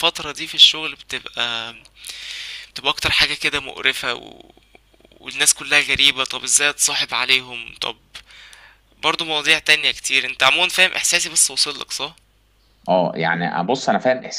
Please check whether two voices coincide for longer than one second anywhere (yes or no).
no